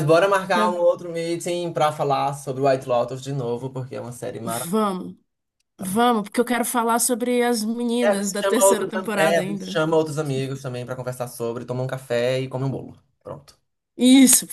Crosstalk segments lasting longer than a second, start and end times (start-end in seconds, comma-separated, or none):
8.0-9.8